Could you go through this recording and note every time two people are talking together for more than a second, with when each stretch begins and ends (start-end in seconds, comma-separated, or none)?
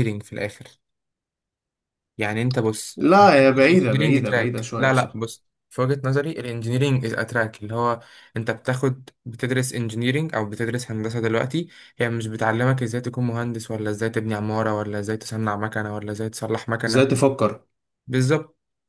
3.7-5.2